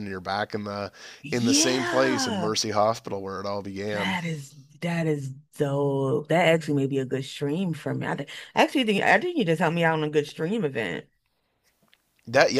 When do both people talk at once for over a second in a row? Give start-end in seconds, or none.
1.3-2.5